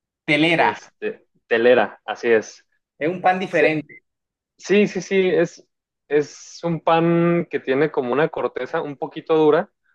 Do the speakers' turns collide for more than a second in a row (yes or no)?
no